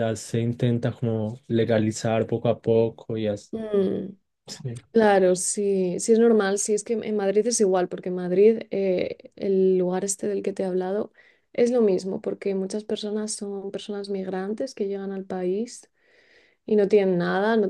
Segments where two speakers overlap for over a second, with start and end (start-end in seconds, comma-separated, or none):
none